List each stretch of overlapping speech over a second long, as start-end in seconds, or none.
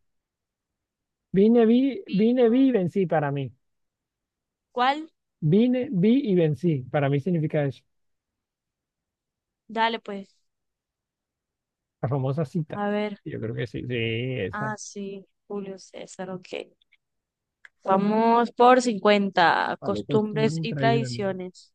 19.8-21.2